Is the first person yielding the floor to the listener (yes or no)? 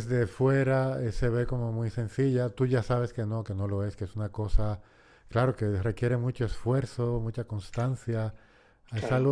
no